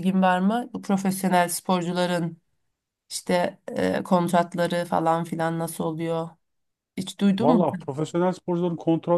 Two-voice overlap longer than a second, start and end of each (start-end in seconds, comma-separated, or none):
none